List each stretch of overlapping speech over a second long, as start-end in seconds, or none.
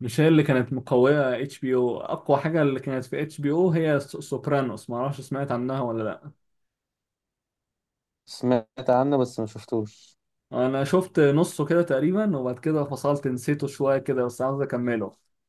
none